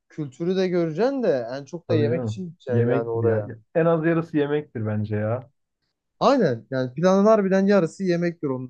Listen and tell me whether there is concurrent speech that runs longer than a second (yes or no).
yes